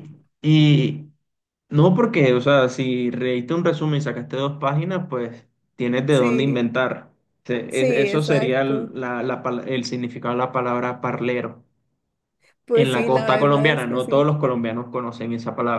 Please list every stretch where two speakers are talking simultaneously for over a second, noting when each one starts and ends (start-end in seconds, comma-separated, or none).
7.7-8.9, 12.7-14.3